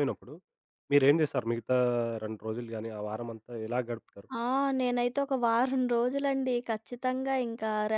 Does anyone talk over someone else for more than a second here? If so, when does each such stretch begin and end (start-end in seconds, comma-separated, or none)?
none